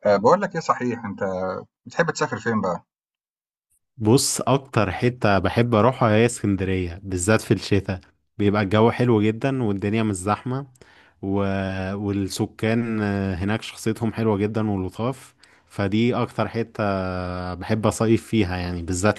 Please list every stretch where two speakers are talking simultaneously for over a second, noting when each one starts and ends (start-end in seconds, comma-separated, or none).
none